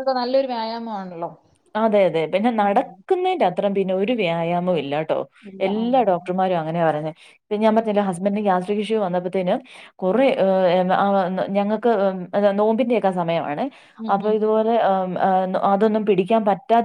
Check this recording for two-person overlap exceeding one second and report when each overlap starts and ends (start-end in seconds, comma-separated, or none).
none